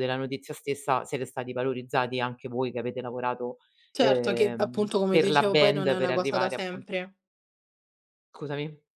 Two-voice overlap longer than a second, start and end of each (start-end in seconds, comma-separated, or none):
4.0-7.0